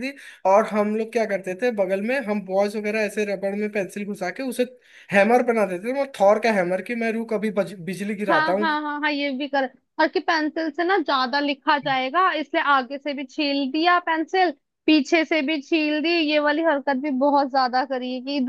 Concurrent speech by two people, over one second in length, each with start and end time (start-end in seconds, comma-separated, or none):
none